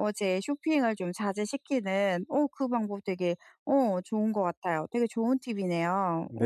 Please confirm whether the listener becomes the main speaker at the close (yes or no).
yes